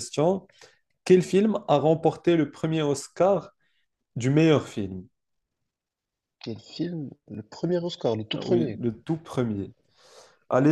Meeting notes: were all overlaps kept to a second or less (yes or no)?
yes